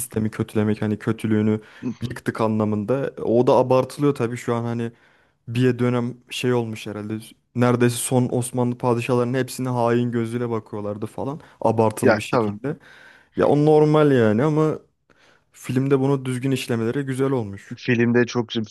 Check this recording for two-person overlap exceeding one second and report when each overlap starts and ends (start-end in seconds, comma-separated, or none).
none